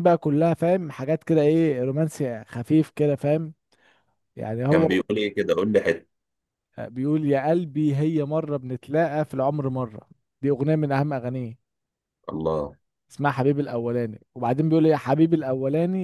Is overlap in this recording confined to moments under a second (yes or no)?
yes